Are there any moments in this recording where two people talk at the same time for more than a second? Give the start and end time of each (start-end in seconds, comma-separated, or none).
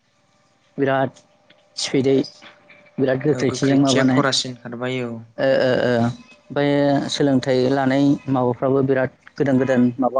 3.4-5.1